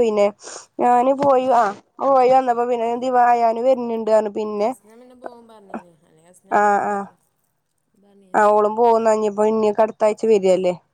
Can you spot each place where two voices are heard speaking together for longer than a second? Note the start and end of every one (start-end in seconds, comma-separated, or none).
none